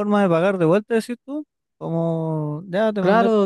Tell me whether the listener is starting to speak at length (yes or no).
yes